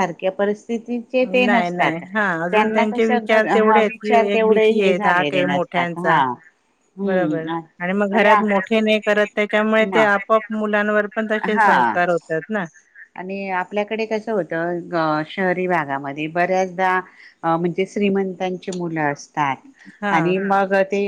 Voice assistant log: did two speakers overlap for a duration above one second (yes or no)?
yes